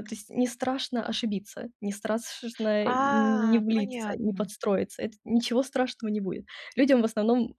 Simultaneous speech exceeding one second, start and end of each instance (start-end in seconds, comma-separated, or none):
2.8-4.5